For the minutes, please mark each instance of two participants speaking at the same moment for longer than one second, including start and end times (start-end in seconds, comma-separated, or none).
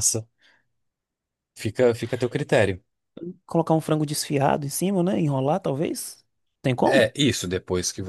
none